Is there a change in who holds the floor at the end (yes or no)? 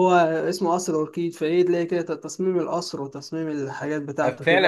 yes